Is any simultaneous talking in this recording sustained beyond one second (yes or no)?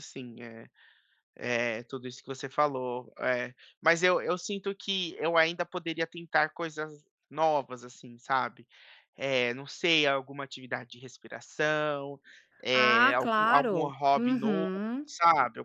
yes